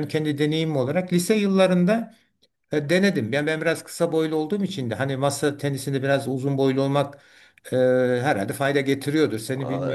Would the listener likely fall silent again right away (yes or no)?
no